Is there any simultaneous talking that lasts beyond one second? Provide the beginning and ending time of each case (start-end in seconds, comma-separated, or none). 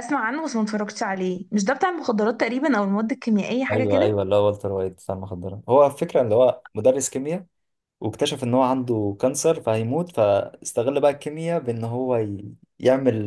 none